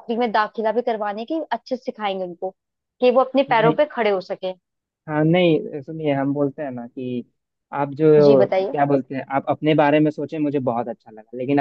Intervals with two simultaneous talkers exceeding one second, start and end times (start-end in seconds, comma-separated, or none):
none